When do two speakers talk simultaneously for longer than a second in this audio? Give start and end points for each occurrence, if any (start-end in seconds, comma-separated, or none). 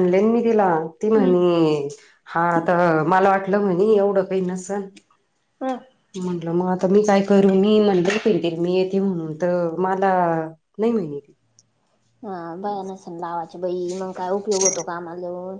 none